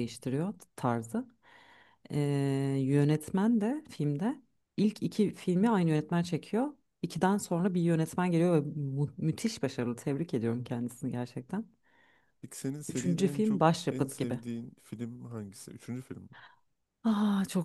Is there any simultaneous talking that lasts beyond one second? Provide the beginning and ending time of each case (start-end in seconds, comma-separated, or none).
12.9-14.4